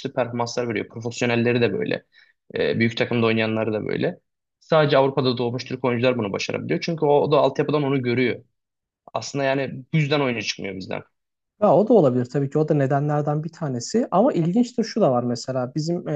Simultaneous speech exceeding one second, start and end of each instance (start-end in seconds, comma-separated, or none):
none